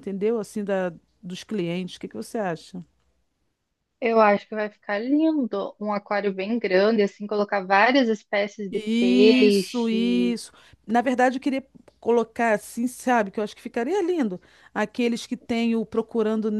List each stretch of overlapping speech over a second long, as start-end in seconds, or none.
8.7-10.4